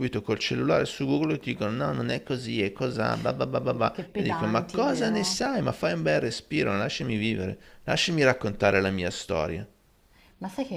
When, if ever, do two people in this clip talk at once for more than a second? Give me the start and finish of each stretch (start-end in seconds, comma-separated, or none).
3.9-5.4